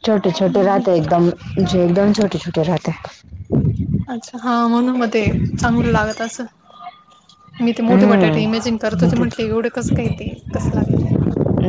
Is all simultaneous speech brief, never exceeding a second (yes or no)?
no